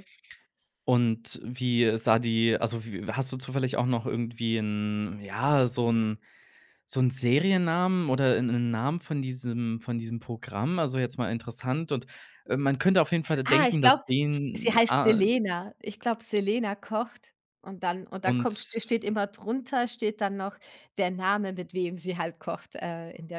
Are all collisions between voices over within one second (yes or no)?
no